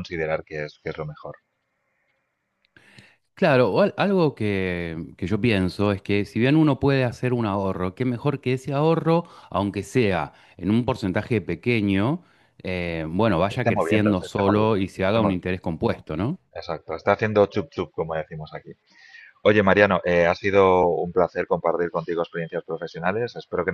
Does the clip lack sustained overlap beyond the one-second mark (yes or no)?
no